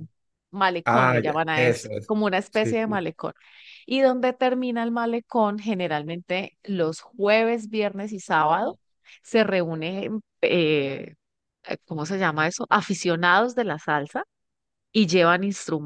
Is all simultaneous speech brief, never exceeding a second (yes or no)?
no